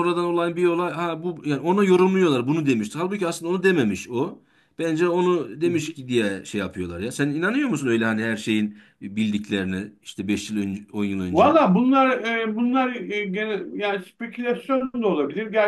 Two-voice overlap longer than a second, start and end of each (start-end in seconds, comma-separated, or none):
none